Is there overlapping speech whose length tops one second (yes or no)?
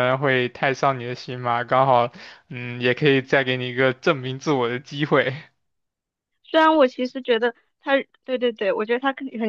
no